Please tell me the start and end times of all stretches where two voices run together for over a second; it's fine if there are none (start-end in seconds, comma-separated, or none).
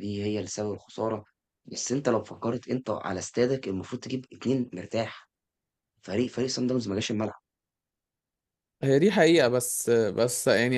none